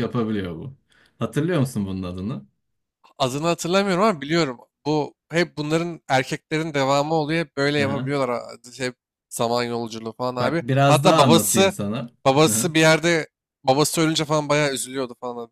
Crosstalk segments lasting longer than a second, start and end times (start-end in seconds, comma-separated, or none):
10.4-11.7